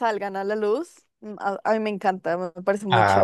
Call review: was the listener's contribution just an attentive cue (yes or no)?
no